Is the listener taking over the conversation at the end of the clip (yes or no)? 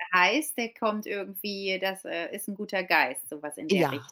yes